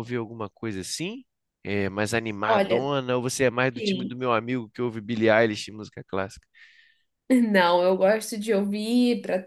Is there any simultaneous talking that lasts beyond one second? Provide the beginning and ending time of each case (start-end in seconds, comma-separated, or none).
none